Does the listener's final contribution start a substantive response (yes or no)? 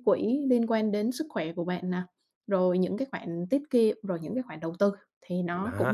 yes